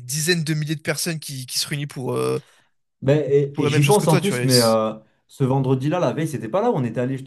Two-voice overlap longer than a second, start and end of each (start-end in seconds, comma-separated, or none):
3.5-4.8